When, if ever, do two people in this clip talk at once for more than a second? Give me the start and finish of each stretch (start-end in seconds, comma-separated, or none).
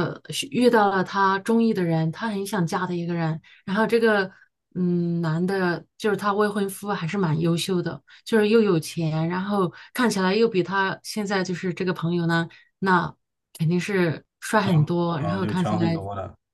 14.6-16.0